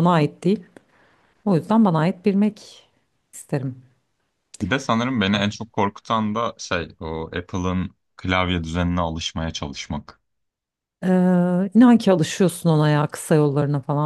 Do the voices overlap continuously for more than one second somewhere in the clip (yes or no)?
no